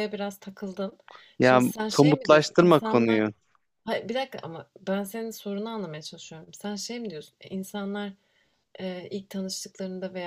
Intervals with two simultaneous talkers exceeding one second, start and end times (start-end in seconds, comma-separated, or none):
1.4-3.2